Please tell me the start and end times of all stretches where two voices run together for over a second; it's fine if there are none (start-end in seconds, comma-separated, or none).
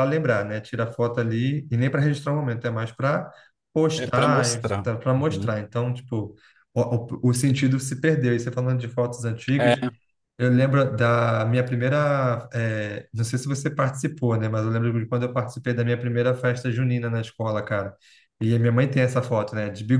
4.0-5.5